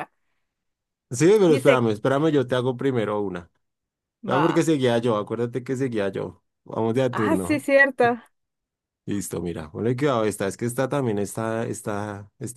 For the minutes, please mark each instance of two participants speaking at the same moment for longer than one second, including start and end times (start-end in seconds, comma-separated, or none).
none